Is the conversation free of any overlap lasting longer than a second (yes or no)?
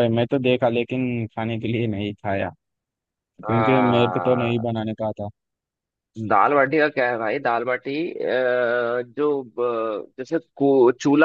no